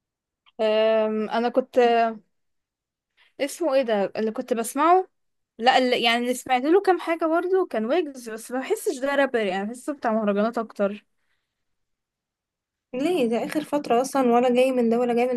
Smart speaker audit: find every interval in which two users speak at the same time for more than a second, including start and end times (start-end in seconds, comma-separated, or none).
none